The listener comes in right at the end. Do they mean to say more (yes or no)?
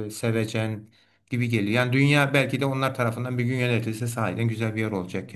yes